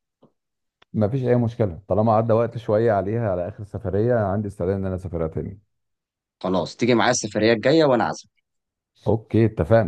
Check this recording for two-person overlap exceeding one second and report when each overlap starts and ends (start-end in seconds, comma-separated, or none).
none